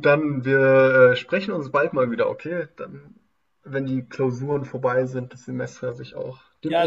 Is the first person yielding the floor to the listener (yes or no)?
yes